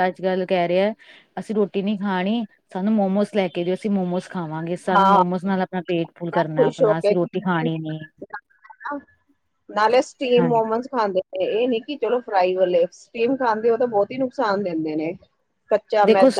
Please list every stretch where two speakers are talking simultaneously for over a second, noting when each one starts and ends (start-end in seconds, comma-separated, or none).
6.6-8.0